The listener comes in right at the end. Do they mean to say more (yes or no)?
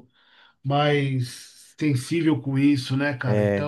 yes